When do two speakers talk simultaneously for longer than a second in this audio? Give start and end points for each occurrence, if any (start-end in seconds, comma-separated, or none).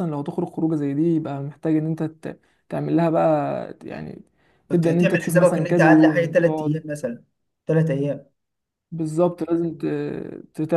4.7-6.9